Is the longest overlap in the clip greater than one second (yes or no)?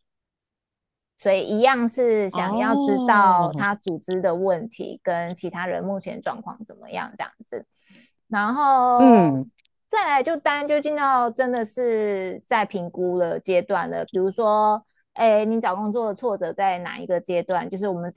yes